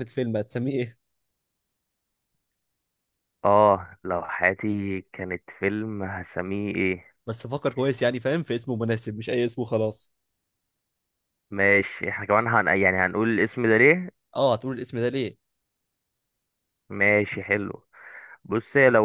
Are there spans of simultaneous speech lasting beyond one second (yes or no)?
no